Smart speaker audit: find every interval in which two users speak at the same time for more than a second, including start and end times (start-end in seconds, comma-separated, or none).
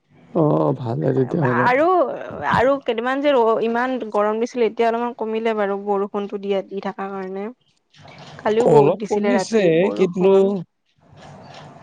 8.7-10.3